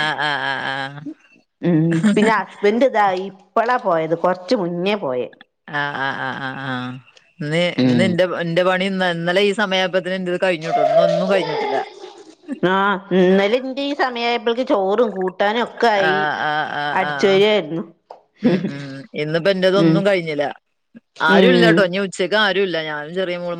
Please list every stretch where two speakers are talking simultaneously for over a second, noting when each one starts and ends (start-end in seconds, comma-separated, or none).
none